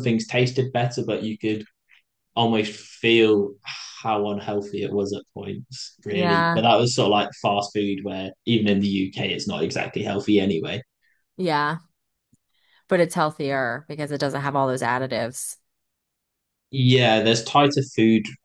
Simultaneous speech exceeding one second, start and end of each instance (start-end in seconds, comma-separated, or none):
none